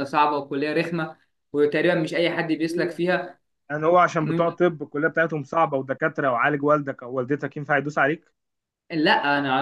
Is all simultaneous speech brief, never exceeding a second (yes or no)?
yes